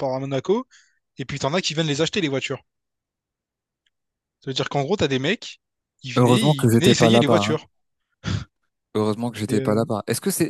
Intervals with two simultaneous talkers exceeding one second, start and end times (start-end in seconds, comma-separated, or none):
6.2-7.5